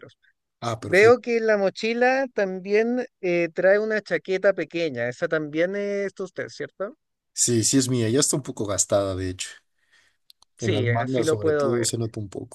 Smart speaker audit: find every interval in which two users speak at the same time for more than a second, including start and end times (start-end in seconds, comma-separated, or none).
10.6-11.9